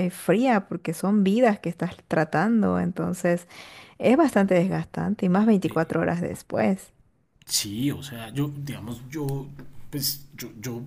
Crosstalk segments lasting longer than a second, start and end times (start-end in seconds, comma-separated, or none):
none